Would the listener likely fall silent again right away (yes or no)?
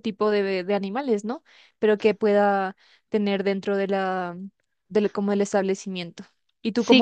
no